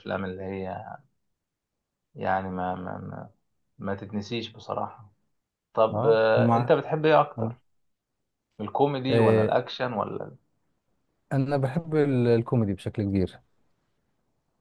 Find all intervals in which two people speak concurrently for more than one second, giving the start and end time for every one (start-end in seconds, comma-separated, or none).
none